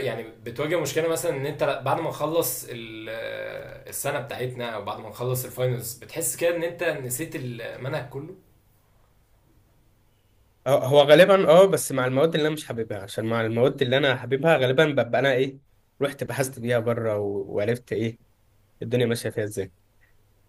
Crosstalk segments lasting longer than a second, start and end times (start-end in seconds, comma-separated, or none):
none